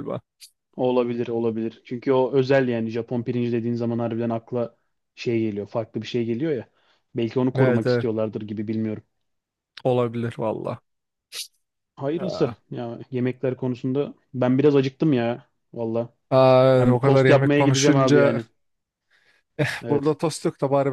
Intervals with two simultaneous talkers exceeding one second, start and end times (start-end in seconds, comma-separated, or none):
16.8-18.4